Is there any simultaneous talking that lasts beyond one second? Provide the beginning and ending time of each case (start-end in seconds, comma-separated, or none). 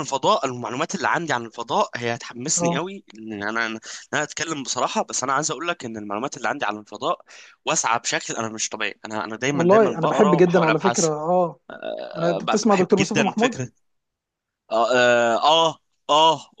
9.5-11.1, 12.2-13.6